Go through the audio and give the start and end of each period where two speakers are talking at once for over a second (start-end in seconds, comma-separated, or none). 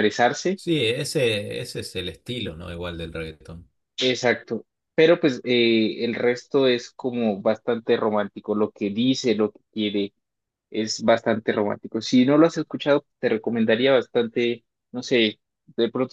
none